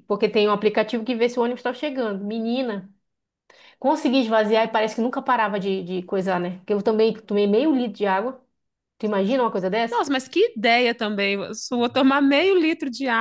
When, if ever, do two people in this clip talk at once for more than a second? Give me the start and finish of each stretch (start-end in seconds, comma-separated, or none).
none